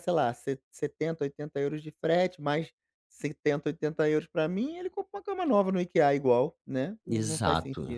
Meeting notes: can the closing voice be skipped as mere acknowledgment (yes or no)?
no